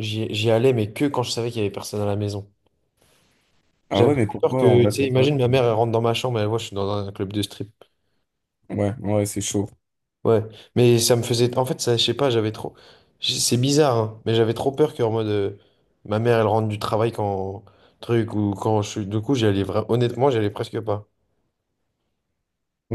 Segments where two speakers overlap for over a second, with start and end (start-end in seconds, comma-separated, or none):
3.9-5.3